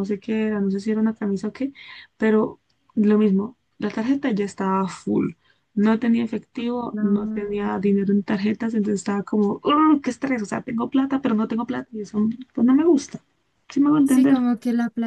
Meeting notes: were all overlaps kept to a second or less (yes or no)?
yes